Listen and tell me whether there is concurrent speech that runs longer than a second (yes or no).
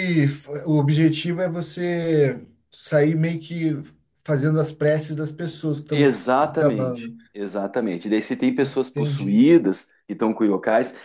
yes